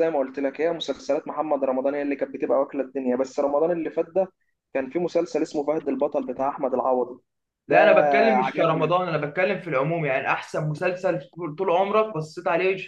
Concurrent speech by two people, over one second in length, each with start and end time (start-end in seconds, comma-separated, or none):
none